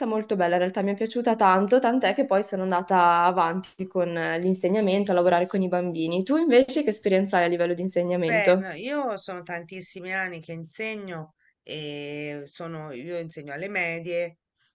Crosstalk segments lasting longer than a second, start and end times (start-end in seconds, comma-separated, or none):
none